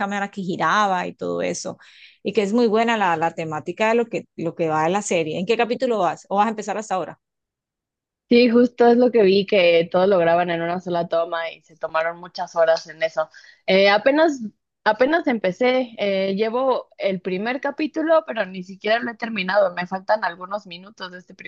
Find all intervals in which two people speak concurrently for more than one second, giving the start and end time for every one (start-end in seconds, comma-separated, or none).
none